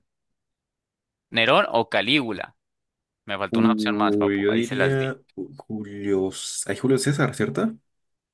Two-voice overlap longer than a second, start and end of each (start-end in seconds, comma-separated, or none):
3.5-5.1